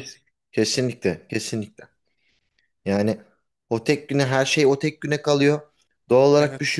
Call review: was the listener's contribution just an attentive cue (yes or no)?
yes